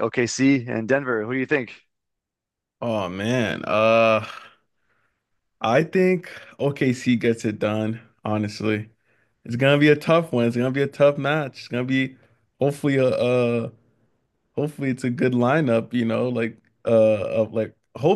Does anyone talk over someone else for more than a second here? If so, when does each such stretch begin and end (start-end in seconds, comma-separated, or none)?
none